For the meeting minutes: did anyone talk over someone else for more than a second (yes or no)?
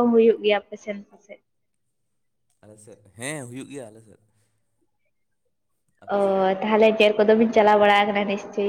no